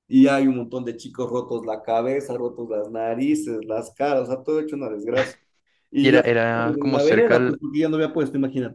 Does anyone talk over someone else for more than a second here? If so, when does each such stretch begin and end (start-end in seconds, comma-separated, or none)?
6.0-7.6